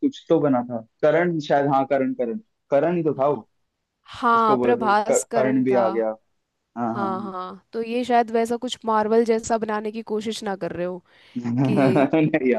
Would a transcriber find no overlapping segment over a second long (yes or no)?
no